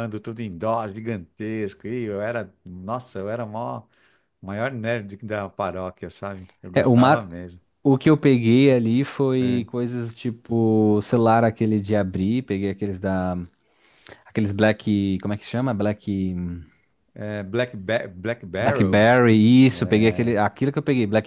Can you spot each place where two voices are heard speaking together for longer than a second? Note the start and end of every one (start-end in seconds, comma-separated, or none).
none